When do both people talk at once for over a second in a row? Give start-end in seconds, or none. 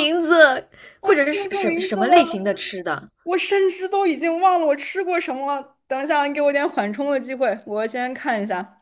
1.0-2.6